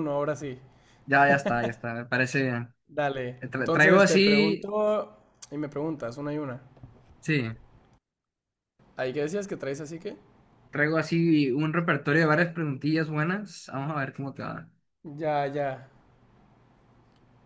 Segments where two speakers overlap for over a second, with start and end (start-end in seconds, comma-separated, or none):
3.4-4.8